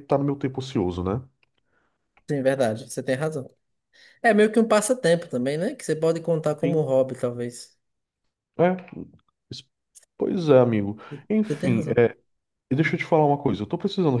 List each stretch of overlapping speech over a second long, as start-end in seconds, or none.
none